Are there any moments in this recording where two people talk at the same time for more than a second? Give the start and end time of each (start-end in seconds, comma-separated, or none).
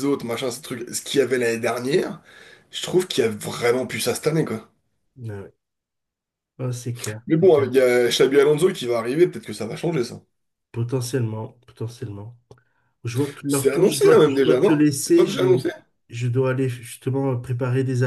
13.5-15.7